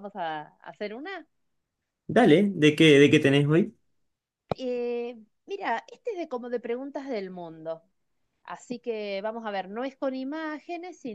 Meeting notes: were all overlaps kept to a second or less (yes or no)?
yes